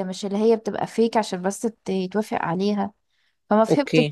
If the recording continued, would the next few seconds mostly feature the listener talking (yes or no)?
no